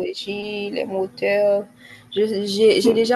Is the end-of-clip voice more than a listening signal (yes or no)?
no